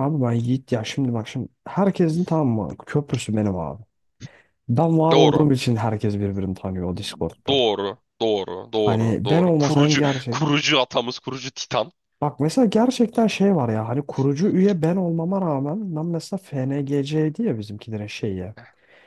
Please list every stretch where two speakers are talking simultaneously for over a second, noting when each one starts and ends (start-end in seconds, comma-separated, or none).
8.7-10.5